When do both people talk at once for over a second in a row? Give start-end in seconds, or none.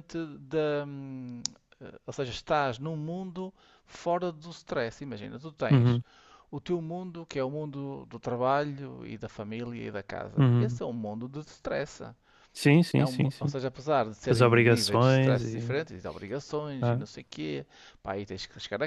14.3-15.8